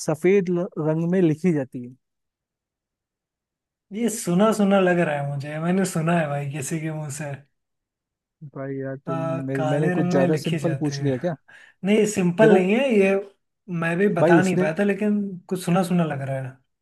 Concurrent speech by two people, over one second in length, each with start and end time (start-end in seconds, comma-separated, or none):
9.1-11.1